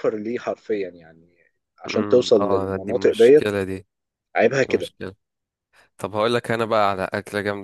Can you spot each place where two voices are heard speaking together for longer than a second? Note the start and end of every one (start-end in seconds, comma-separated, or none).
1.9-3.5